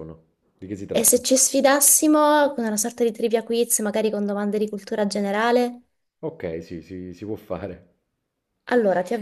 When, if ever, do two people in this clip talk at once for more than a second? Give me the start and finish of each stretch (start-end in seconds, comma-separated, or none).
none